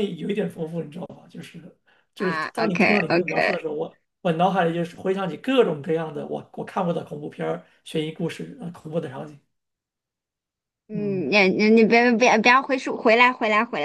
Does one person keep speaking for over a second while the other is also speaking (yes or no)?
yes